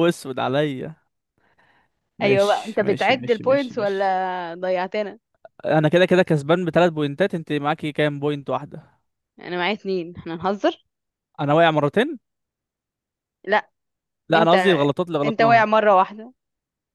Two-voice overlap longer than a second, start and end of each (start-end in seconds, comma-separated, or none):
2.2-4.1